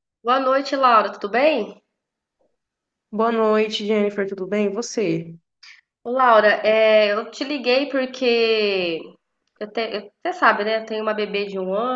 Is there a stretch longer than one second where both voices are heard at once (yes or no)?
no